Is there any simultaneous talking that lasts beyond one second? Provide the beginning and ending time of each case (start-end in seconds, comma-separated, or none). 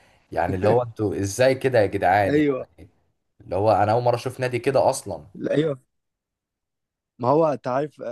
none